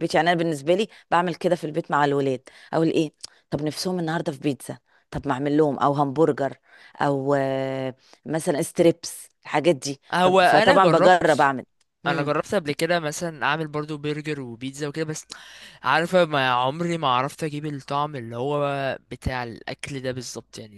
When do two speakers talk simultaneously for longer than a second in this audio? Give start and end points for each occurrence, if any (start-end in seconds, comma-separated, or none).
10.1-11.5